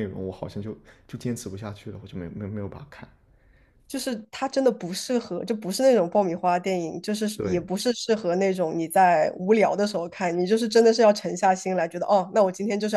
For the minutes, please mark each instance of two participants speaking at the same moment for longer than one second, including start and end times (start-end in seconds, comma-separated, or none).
none